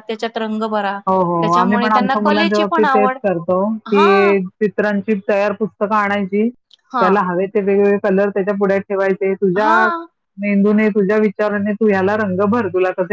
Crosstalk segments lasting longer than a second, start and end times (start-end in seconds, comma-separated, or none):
1.4-3.1